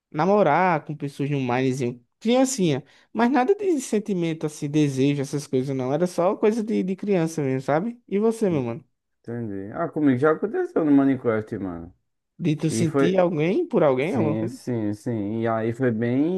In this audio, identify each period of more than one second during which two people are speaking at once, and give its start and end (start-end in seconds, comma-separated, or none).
none